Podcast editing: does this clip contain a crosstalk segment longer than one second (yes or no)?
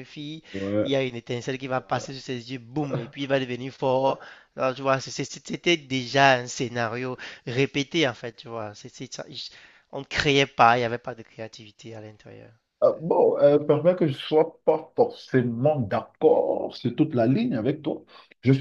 no